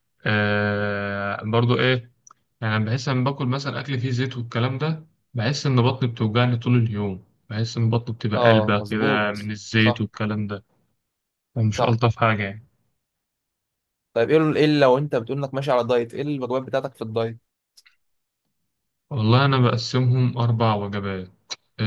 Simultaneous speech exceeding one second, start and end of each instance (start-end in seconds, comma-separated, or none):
8.3-10.1